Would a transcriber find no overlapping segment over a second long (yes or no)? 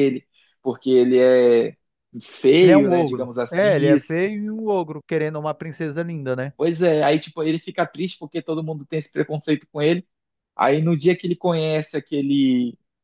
no